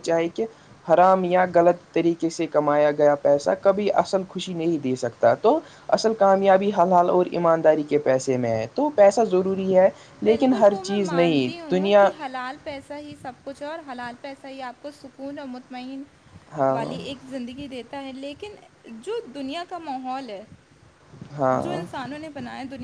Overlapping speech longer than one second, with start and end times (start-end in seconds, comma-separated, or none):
10.3-12.1